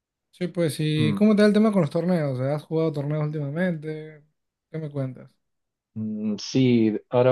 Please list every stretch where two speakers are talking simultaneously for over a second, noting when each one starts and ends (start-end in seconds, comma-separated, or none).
none